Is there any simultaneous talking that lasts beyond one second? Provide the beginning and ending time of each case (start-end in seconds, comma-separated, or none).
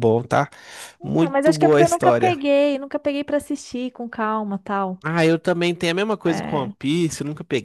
1.0-2.4